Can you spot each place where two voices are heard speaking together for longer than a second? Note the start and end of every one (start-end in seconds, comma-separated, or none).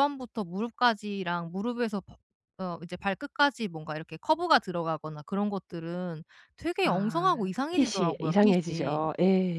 6.8-9.1